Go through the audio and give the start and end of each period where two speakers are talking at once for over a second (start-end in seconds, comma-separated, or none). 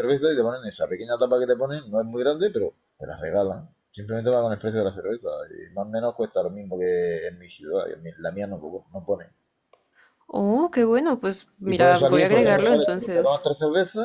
11.7-13.4